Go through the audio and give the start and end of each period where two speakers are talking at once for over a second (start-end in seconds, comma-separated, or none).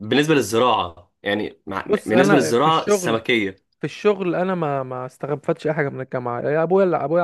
1.9-3.2